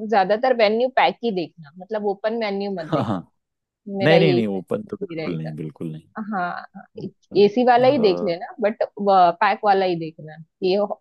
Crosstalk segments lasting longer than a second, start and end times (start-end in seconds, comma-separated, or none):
4.0-5.5